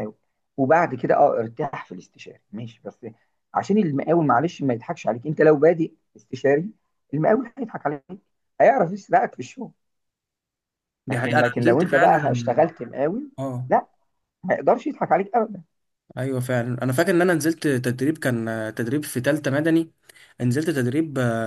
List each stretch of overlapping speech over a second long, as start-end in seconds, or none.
11.1-12.7